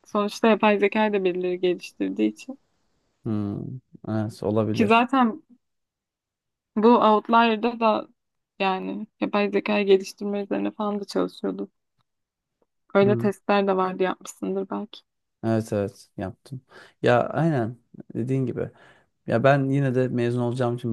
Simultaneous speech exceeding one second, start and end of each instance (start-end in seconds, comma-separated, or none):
none